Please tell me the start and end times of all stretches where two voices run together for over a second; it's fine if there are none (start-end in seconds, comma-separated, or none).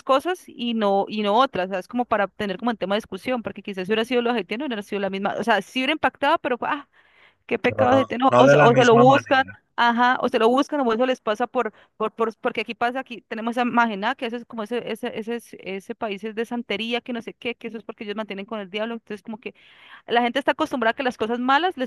7.7-9.6